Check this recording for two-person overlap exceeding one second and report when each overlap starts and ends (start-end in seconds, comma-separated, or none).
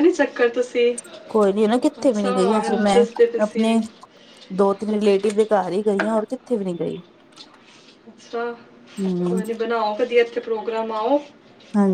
2.0-3.7